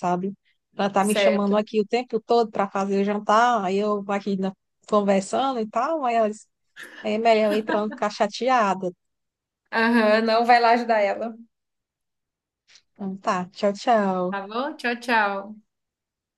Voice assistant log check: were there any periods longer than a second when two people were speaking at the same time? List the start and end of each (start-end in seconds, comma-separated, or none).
none